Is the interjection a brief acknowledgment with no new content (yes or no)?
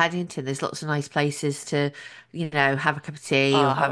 no